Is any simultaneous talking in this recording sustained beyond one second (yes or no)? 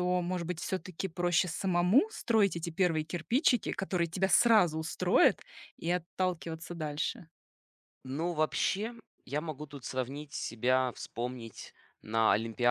no